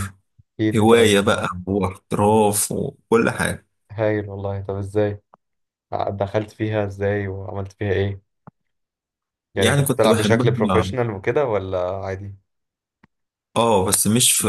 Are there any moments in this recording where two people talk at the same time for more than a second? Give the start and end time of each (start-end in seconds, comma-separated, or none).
9.6-10.9